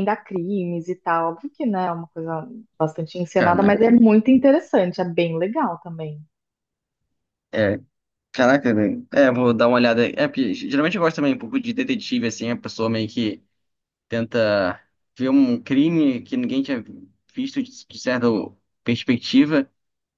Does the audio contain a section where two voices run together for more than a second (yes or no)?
no